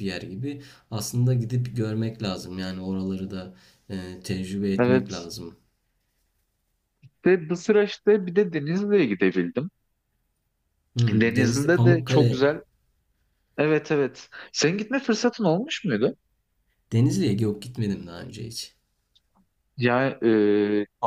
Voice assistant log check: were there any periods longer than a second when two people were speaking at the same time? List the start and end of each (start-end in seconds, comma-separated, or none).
11.1-12.5